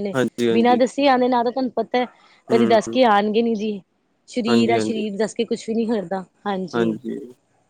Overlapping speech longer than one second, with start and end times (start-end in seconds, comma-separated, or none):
none